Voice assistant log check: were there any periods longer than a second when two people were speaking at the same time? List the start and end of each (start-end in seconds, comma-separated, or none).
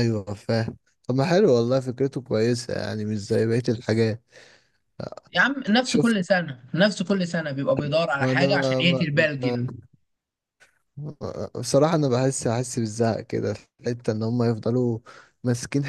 8.2-9.7